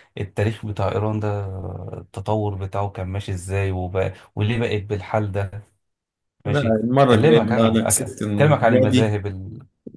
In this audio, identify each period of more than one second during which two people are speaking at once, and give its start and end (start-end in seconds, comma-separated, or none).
6.5-9.2